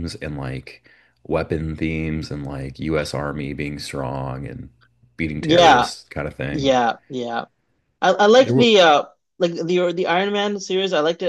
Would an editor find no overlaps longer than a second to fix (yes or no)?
yes